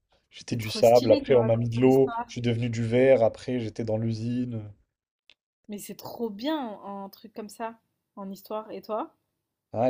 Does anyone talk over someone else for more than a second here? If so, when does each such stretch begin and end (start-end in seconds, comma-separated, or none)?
0.5-2.3